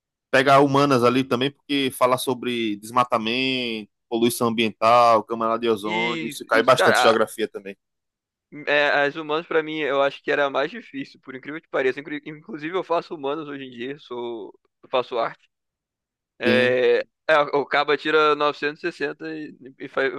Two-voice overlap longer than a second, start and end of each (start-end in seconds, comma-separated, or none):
5.8-7.2